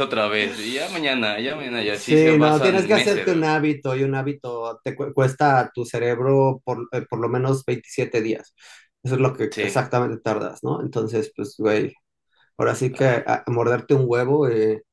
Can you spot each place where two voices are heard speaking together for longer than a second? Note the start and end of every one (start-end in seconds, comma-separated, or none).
1.9-3.5